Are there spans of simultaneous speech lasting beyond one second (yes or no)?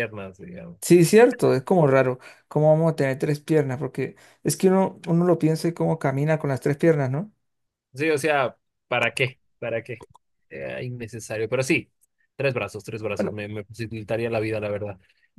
no